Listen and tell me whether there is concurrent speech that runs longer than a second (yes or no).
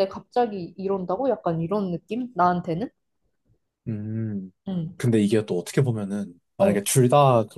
no